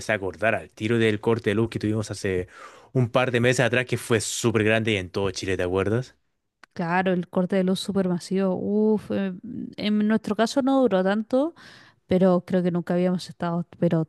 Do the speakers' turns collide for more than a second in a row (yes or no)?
no